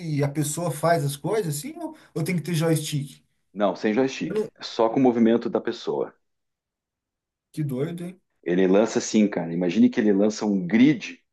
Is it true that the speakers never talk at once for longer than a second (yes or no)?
yes